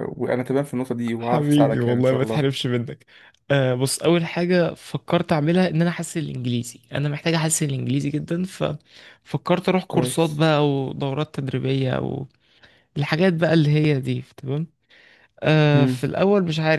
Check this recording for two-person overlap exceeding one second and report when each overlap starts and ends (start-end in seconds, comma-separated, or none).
1.2-2.5